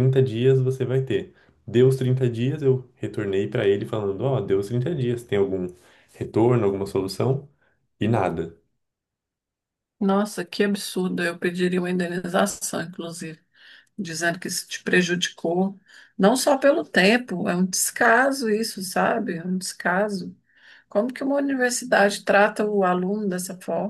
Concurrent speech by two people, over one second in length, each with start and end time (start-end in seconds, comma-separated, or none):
none